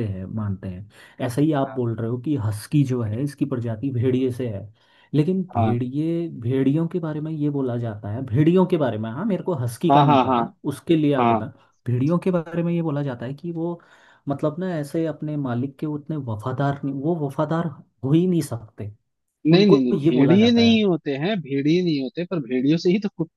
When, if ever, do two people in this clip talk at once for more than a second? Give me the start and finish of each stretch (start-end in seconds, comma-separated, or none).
19.5-20.8